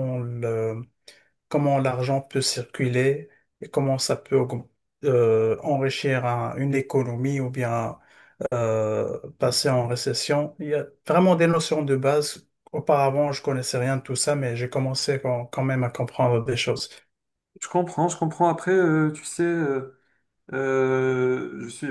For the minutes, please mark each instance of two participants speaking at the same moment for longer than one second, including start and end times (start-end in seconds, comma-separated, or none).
none